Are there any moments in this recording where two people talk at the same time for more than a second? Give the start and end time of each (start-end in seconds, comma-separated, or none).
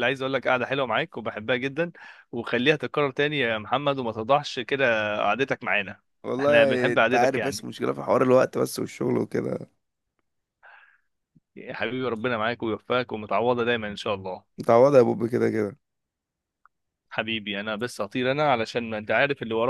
6.4-7.7